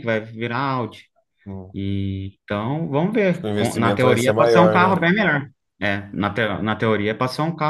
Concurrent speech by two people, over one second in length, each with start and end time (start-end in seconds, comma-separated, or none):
3.3-5.1